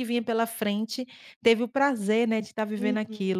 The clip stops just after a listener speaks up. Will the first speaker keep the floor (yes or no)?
no